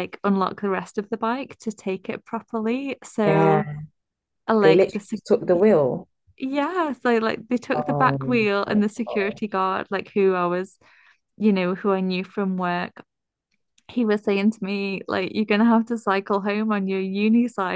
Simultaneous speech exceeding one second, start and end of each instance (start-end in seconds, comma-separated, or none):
7.7-9.4